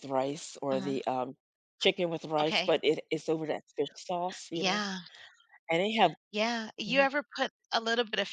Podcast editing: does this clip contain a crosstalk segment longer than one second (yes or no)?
no